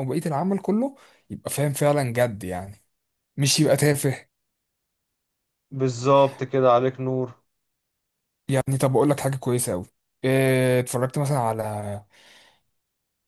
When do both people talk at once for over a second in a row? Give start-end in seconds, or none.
none